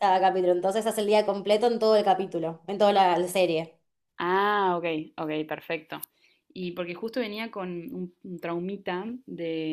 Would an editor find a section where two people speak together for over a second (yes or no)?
no